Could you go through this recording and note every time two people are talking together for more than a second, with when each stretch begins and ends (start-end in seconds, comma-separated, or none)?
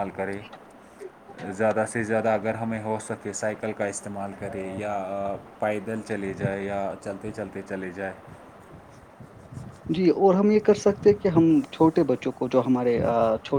none